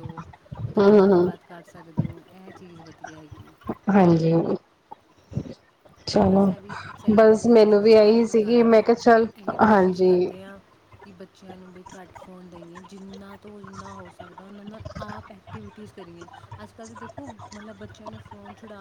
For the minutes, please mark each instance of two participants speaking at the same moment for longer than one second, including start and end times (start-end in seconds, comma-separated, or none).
7.5-8.8